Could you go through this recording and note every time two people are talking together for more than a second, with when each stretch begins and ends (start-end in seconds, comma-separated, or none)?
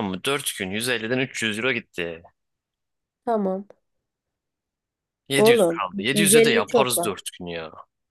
5.4-7.1